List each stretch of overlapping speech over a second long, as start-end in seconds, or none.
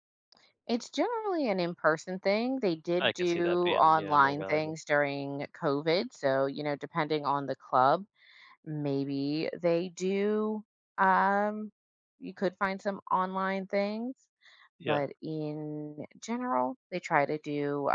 3.0-4.8